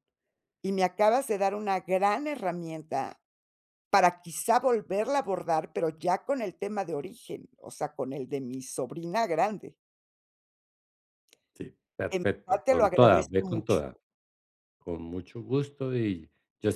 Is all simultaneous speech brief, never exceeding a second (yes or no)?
no